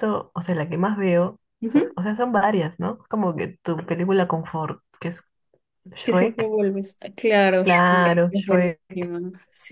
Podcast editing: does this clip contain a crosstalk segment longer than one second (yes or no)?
yes